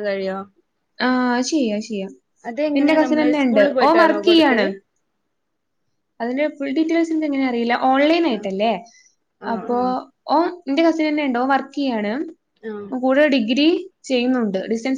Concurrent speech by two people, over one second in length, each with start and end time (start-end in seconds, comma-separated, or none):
2.8-4.7